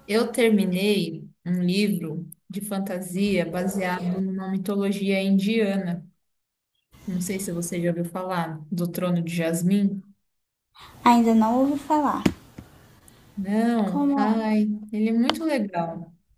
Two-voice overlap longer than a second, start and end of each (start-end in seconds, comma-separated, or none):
none